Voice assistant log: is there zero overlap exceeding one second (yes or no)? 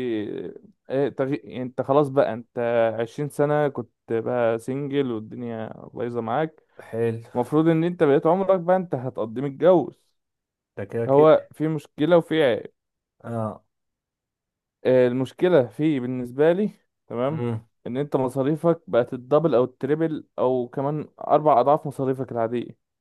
yes